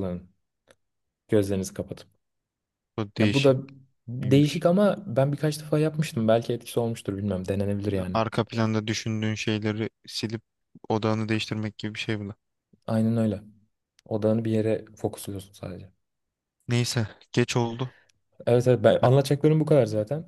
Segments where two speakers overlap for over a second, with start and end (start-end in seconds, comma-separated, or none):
none